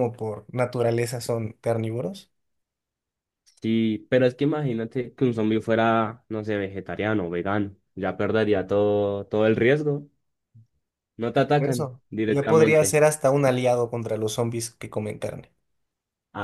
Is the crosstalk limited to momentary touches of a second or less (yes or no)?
no